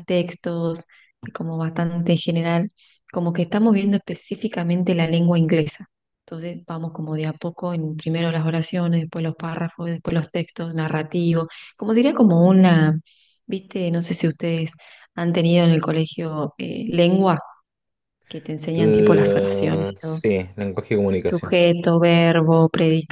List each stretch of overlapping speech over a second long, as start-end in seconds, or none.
18.7-20.2